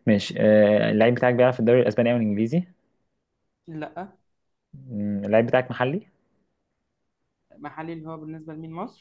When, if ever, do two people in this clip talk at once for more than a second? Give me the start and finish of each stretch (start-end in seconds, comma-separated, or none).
none